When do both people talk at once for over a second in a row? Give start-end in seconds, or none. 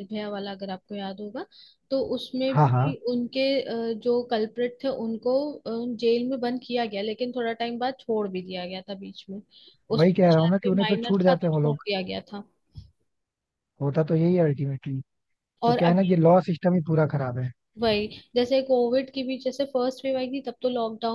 10.0-11.8